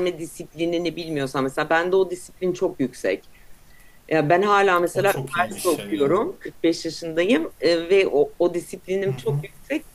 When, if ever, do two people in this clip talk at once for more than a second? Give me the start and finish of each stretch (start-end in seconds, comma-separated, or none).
4.9-6.2